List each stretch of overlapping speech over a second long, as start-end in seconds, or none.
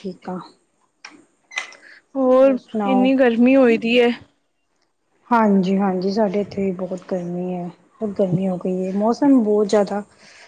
none